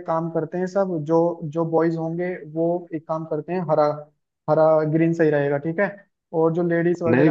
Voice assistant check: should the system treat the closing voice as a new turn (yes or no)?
no